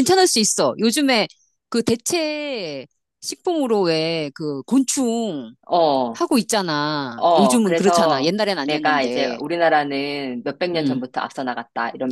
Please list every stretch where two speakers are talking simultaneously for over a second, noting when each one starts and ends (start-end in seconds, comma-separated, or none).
7.2-9.4